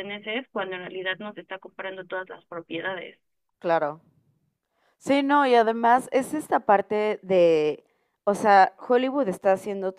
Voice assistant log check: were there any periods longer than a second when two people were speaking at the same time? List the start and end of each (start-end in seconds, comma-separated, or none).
none